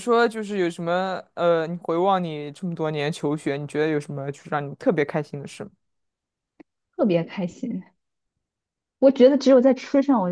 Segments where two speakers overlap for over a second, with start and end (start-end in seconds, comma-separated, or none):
none